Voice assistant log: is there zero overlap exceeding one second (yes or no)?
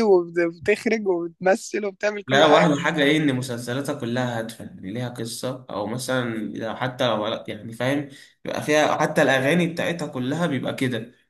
yes